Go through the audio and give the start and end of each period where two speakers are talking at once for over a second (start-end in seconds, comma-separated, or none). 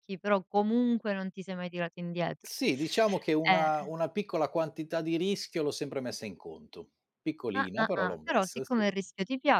7.5-8.9